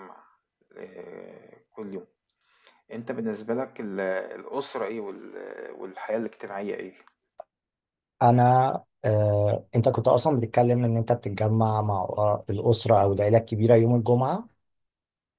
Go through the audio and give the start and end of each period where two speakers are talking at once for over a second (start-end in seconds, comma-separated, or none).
none